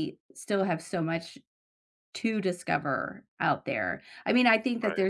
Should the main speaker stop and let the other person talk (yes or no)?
no